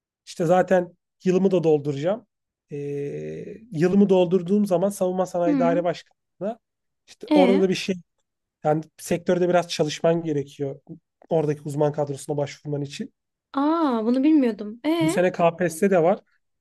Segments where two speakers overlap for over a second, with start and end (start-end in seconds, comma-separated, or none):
none